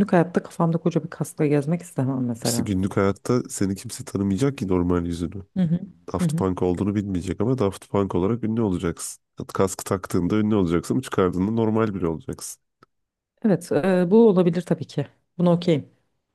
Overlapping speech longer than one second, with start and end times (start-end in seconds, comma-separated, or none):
none